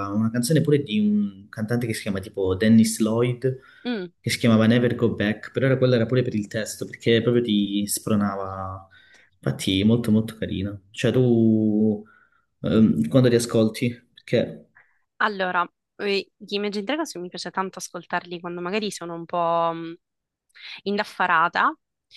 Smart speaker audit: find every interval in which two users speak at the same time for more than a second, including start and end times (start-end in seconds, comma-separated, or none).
none